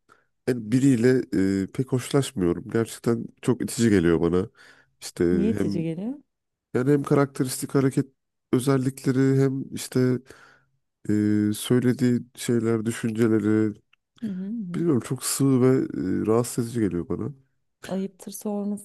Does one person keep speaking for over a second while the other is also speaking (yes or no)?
no